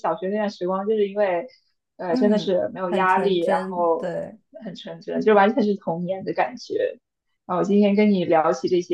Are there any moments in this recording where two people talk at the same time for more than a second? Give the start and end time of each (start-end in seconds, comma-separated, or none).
2.1-4.1